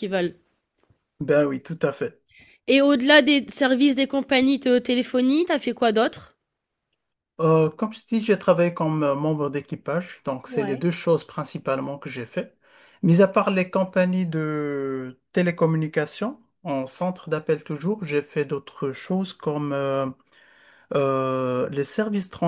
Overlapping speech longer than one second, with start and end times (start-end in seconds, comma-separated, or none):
none